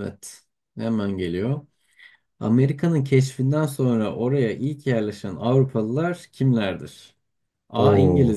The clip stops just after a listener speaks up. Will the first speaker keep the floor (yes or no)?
yes